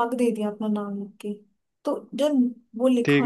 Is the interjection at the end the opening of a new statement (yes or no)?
no